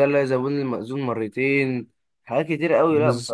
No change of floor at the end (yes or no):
yes